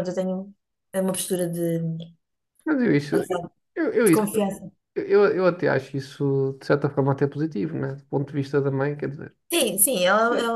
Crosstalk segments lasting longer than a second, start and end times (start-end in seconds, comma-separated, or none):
none